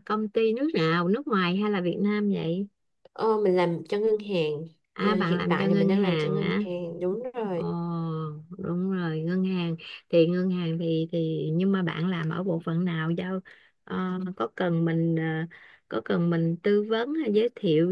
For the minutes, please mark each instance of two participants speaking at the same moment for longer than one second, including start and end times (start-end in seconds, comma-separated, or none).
4.9-6.6